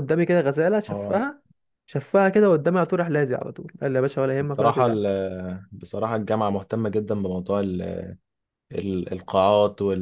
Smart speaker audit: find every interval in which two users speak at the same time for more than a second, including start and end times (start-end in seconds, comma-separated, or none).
none